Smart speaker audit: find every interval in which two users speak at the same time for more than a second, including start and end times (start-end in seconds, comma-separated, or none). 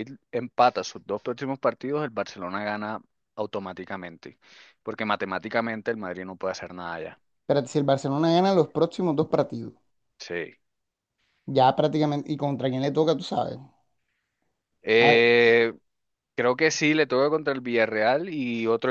none